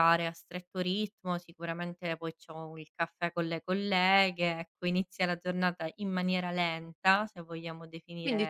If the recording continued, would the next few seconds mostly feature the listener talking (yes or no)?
yes